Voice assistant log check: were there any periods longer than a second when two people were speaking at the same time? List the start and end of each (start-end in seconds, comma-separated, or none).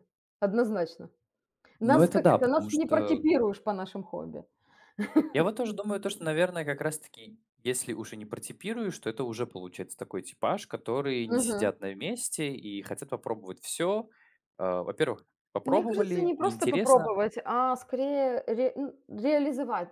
1.8-3.2, 15.7-17.1